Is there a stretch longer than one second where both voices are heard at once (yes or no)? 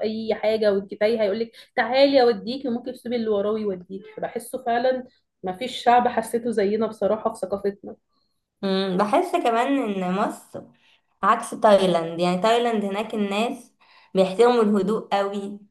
no